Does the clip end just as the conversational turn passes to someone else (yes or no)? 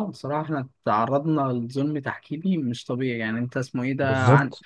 no